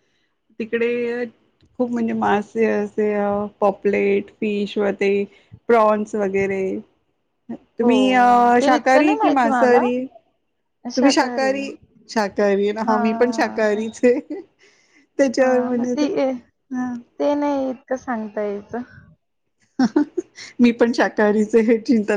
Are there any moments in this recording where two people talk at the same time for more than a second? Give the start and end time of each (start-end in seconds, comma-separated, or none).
8.6-9.8